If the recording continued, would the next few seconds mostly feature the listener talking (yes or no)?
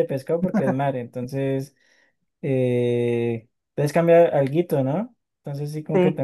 no